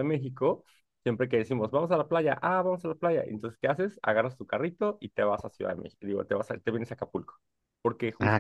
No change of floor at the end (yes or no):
yes